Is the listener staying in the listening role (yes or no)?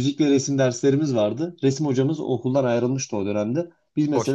yes